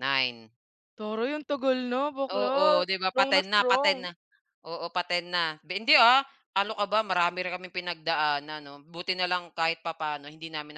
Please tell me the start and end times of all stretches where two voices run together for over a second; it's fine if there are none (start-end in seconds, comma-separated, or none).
2.3-3.9